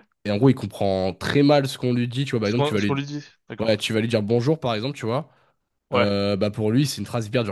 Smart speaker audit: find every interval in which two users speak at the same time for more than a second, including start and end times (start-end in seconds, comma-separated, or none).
none